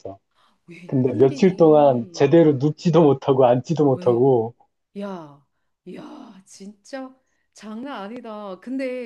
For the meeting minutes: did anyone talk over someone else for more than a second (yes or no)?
yes